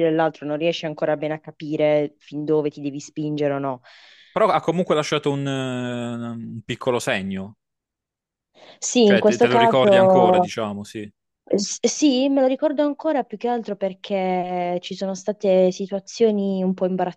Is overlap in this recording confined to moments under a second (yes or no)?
no